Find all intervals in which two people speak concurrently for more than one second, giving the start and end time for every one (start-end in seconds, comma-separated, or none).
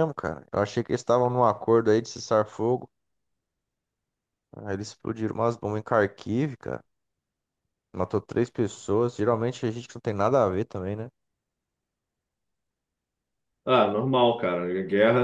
none